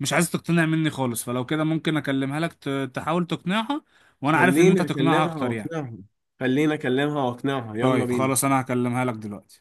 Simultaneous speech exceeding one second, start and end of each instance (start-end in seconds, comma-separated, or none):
4.3-5.7